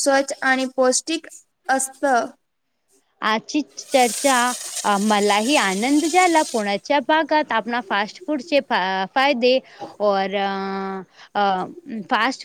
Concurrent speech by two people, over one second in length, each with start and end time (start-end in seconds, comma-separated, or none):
none